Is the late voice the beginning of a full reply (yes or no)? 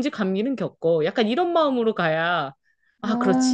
no